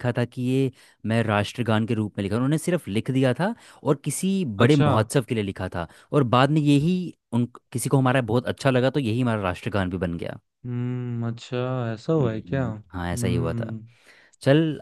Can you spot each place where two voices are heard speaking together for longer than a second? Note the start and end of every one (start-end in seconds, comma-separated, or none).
12.2-13.7